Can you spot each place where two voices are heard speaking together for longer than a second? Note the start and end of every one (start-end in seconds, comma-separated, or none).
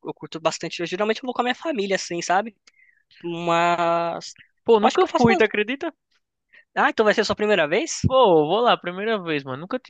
none